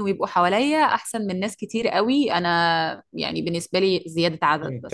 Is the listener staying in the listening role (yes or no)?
no